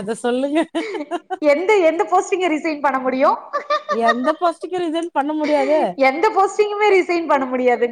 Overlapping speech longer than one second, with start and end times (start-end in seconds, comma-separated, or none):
none